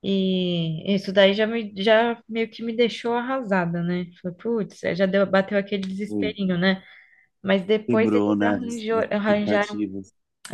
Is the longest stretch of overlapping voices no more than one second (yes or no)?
no